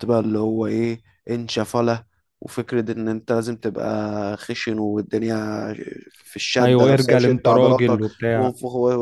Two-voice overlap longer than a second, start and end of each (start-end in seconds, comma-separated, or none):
6.6-8.5